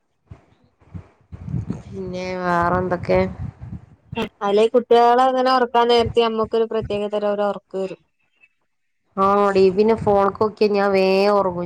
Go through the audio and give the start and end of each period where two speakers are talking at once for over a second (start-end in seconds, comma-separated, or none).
none